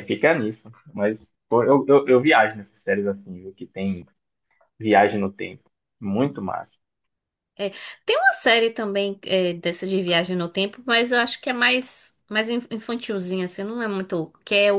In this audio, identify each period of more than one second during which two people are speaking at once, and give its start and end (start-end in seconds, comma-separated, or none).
none